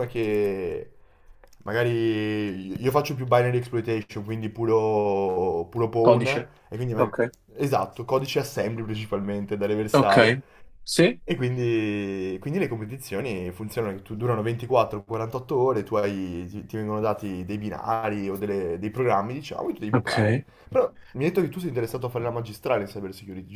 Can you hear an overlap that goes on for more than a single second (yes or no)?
no